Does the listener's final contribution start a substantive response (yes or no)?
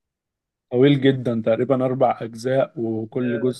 no